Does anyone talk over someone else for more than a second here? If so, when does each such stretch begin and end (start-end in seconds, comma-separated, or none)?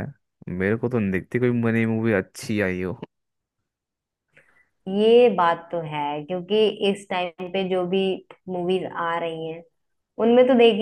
none